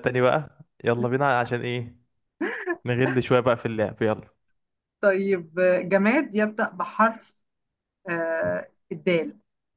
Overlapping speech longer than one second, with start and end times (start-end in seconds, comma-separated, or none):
none